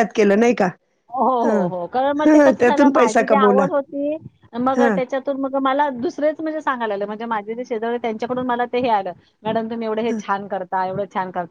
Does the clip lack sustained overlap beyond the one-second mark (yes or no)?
no